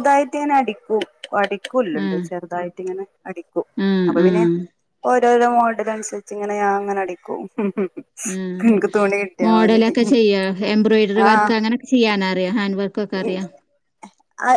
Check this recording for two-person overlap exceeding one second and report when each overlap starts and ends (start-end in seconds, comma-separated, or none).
none